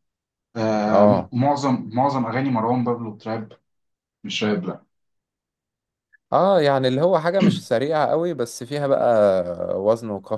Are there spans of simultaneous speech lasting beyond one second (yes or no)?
no